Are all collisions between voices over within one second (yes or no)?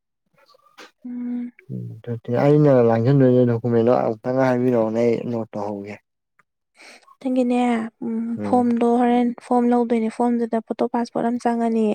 yes